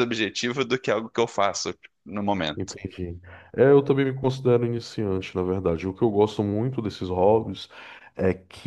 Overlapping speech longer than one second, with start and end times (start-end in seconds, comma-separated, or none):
none